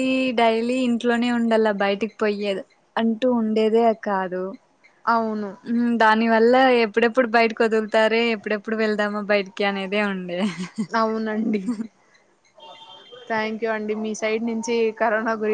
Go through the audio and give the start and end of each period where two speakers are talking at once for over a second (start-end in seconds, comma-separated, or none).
none